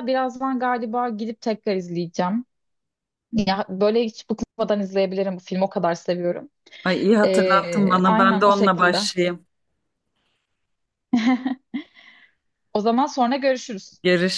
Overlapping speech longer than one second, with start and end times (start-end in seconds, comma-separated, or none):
7.2-9.1